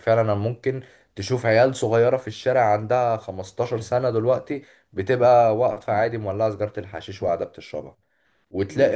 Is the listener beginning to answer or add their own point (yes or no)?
no